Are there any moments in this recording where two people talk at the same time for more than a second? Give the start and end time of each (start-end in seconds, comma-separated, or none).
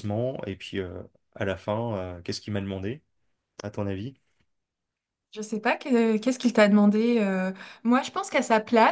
none